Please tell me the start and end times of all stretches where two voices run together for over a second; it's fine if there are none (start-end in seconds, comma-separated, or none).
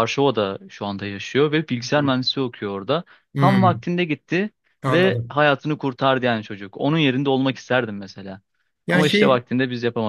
none